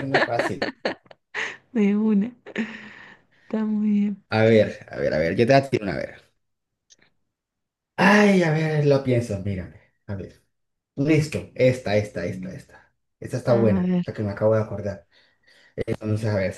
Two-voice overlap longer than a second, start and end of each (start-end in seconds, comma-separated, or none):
none